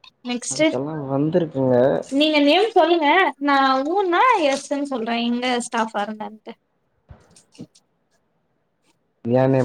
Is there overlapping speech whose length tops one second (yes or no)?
yes